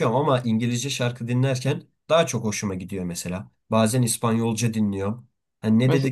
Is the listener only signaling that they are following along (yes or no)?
yes